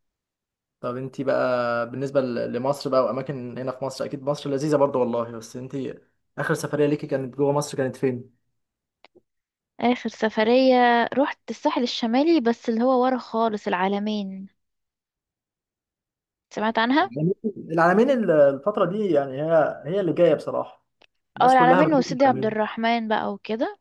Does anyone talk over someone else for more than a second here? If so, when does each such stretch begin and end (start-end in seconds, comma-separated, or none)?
21.4-22.6